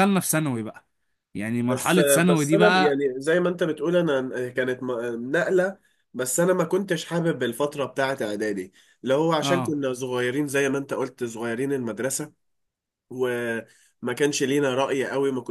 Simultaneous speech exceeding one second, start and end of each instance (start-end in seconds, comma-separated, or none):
1.7-3.0